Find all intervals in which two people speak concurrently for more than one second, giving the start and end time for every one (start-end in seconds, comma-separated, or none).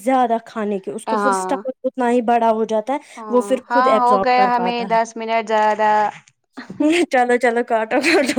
3.2-5.0